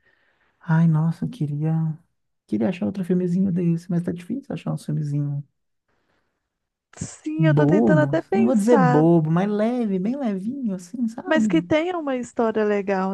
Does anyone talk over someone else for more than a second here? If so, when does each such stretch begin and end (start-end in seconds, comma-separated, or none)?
7.4-9.1